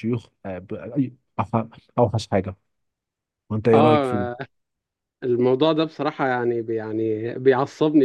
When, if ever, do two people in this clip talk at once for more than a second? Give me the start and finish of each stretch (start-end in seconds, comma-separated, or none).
none